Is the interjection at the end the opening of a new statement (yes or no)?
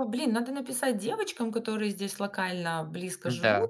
no